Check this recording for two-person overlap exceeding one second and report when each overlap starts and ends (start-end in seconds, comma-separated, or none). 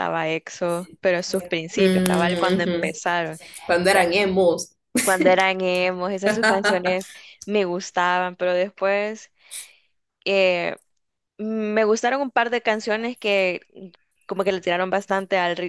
1.8-3.0